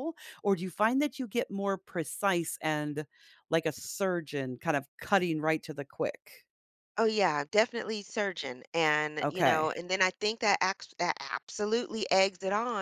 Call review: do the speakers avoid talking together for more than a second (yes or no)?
yes